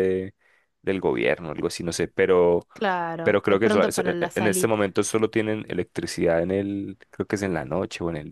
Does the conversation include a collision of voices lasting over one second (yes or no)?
yes